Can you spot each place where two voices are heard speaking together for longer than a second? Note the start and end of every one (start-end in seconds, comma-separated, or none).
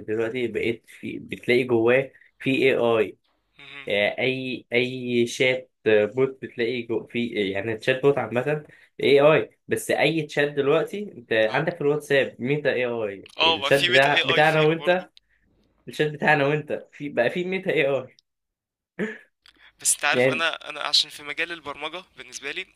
13.4-15.1